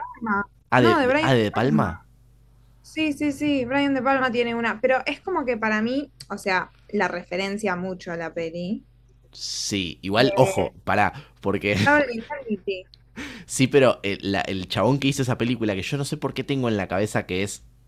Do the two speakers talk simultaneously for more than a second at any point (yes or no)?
yes